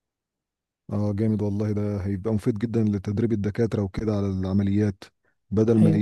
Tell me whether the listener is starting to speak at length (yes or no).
no